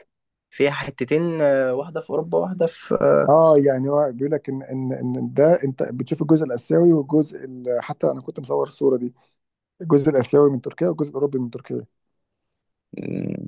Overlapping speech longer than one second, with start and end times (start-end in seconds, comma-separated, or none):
none